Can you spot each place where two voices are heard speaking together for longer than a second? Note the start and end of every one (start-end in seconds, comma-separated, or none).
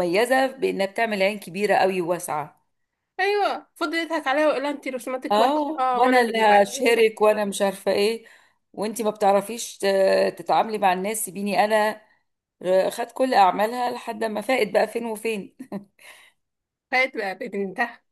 5.3-7.1